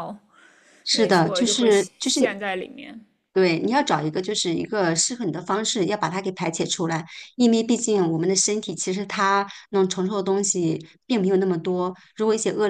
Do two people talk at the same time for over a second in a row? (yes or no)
yes